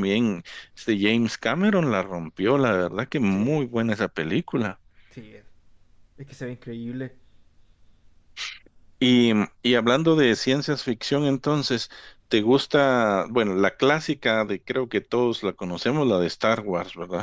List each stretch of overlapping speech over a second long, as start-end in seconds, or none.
none